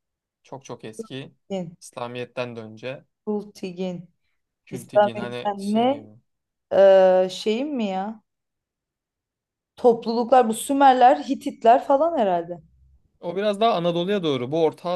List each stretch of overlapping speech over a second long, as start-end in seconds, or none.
4.7-6.0